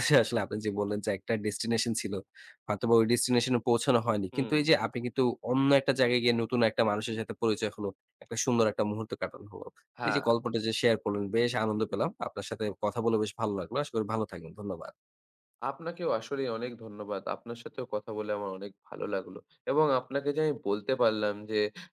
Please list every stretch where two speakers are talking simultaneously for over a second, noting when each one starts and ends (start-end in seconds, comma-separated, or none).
none